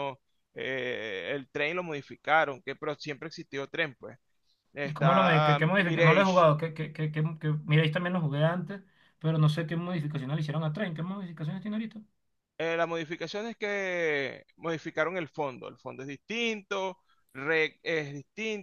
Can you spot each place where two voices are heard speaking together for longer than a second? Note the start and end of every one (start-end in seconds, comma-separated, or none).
4.8-6.5